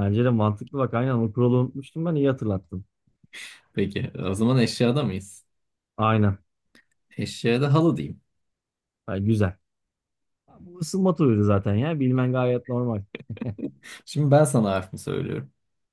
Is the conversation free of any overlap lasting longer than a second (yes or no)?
yes